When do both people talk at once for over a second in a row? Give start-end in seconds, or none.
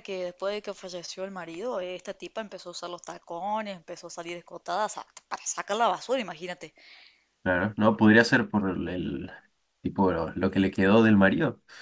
none